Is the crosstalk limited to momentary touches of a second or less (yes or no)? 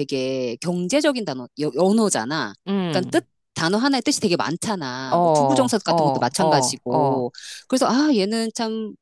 no